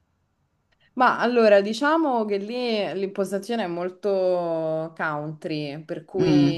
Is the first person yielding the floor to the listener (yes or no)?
no